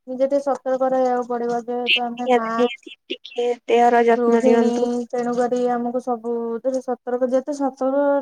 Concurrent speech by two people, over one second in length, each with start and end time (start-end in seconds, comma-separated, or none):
none